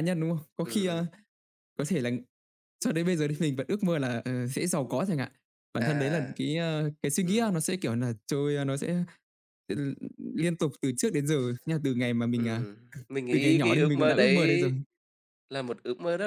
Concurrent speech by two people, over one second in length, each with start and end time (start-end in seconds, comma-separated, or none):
13.3-14.7